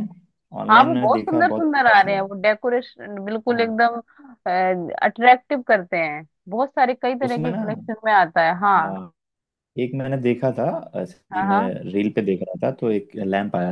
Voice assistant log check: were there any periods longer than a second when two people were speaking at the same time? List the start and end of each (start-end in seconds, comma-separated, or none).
0.7-2.2